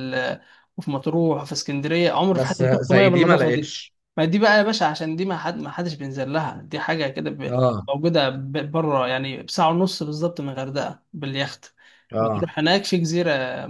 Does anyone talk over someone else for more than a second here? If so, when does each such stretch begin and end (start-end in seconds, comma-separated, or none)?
2.3-3.7